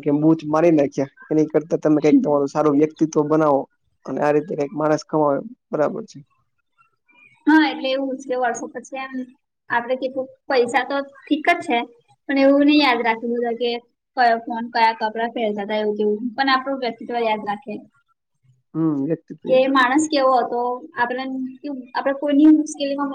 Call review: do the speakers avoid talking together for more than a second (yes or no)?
yes